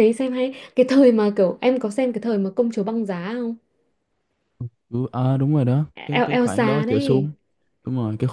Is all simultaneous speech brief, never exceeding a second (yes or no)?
no